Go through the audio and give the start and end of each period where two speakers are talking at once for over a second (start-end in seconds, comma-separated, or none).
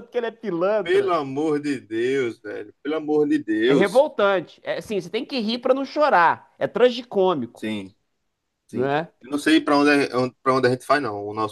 none